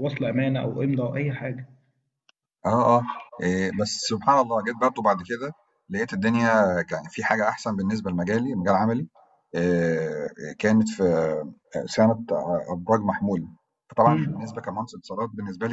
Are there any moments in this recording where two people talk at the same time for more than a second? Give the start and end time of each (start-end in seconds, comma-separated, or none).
none